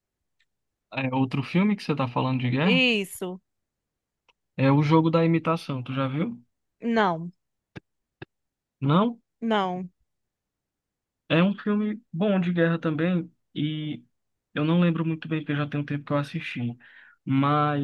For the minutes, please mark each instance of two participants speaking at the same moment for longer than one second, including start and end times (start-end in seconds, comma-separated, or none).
none